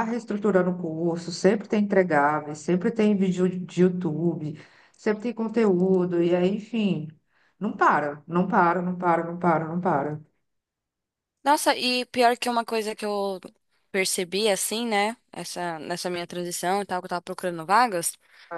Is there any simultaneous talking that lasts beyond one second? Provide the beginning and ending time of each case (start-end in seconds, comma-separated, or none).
none